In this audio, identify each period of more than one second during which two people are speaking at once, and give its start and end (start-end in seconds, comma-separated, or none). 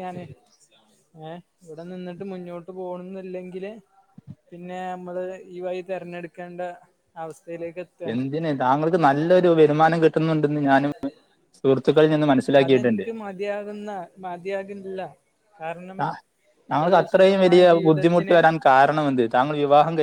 16.8-18.4